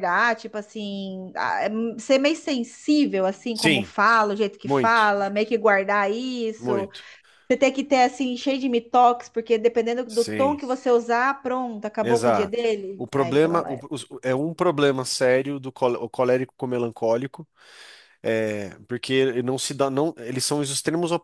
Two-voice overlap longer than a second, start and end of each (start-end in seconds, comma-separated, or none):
12.0-13.8